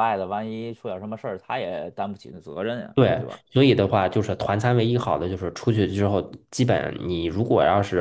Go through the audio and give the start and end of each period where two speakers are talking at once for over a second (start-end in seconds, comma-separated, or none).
none